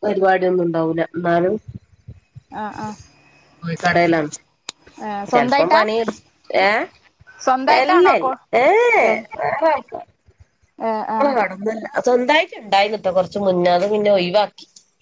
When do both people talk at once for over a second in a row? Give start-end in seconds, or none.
none